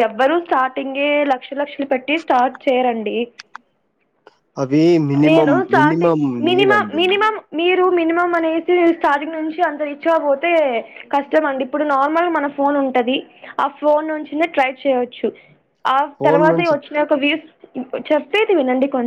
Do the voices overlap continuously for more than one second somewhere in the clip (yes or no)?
yes